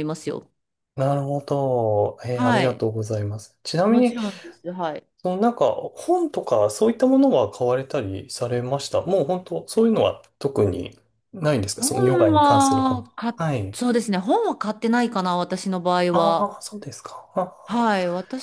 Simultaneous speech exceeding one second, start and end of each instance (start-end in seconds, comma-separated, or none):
11.7-13.8